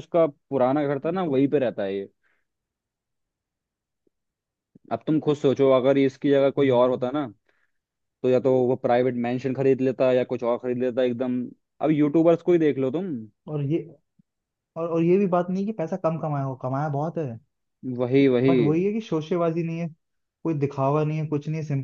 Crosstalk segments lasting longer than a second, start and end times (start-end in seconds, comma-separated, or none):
none